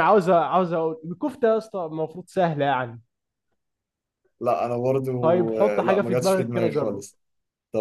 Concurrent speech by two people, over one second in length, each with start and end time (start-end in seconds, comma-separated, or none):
5.6-7.0